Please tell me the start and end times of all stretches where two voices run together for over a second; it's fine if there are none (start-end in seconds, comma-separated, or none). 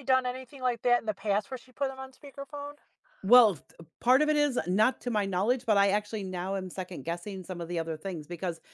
none